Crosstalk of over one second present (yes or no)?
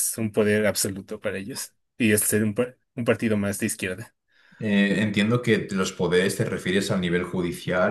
no